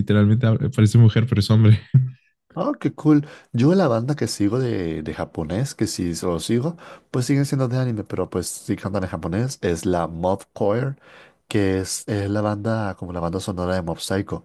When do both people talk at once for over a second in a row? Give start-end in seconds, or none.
none